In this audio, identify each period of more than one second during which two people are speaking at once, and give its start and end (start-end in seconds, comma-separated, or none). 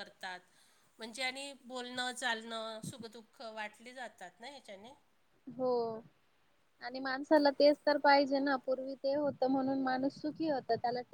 none